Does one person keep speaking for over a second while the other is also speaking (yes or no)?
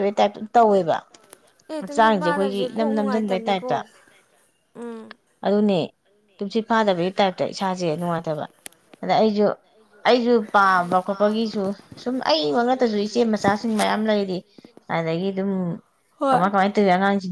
yes